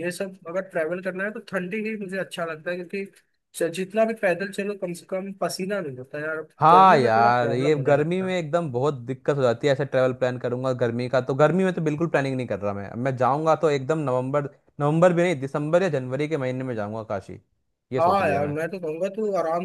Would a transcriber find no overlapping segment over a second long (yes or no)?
no